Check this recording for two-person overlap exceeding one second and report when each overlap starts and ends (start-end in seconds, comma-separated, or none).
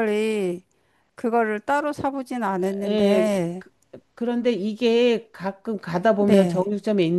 none